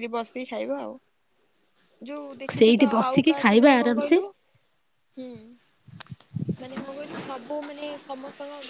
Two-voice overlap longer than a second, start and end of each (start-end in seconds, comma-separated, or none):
2.6-4.2